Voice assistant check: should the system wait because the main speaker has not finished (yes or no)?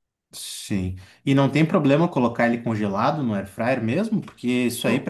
yes